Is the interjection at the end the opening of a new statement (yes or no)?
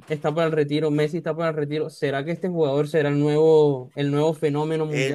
yes